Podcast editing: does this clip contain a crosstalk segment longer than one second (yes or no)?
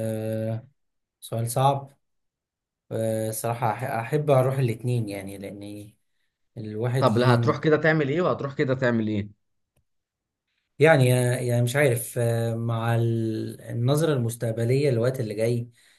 no